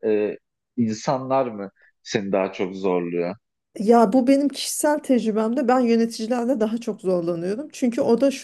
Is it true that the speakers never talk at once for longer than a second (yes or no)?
yes